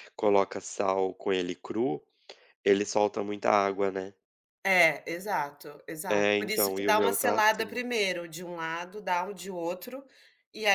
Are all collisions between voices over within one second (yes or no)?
no